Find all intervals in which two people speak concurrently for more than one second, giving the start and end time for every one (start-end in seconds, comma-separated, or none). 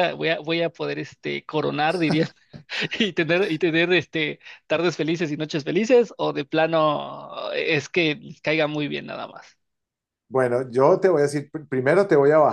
none